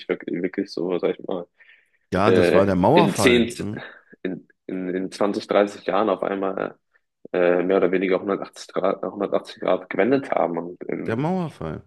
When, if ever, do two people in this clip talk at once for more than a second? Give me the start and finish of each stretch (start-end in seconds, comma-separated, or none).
2.2-3.5